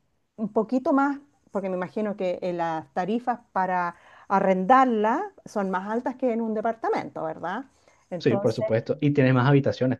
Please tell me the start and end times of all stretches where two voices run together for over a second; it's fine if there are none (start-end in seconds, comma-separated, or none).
none